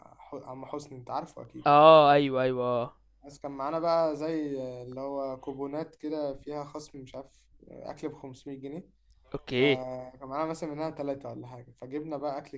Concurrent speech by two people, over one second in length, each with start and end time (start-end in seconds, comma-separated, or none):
none